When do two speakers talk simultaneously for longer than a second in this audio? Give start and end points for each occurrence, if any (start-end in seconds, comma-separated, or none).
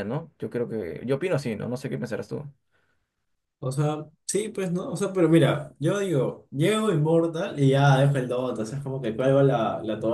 none